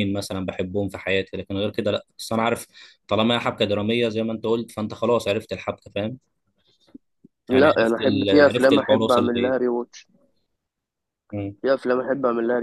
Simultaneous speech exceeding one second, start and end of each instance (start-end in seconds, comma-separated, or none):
7.5-9.6